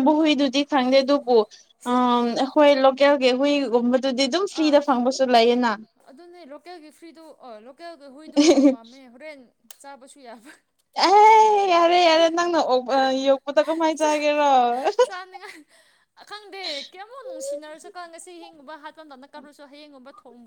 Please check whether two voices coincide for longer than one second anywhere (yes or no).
no